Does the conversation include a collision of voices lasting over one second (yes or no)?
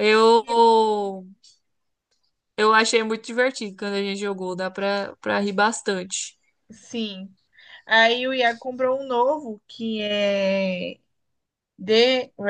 no